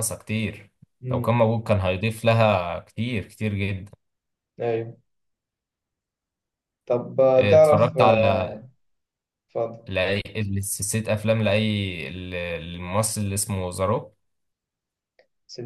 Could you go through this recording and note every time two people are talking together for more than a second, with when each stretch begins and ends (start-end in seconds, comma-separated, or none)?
7.4-8.6